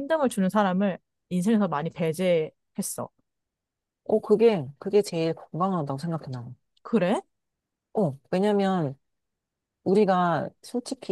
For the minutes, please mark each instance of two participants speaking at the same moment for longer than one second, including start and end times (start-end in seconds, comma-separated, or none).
none